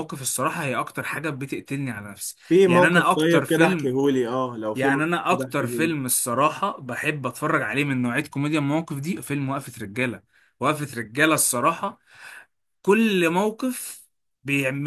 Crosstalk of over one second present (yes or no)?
yes